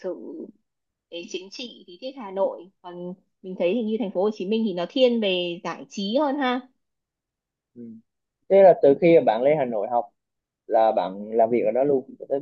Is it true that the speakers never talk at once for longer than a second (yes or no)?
yes